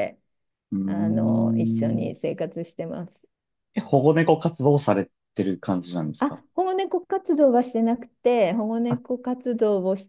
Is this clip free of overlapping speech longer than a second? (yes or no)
no